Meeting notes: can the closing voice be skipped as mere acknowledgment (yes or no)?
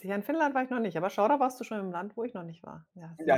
no